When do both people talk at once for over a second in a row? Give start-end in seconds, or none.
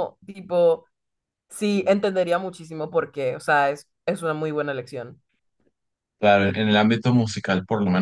none